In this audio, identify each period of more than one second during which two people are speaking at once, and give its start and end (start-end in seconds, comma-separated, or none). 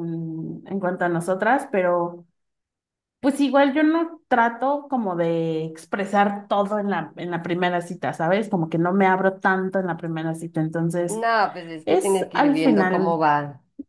11.9-13.2